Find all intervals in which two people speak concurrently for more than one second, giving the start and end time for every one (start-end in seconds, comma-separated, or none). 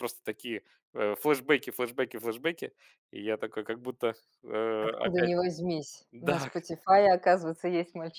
none